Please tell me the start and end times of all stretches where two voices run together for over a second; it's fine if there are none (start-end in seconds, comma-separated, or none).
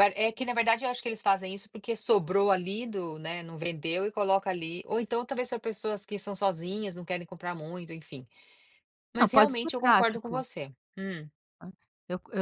9.2-10.4